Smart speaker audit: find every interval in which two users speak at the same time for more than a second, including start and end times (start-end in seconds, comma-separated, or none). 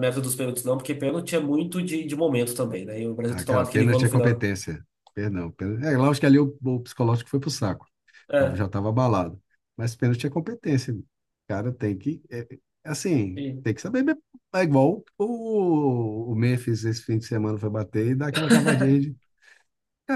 3.3-4.5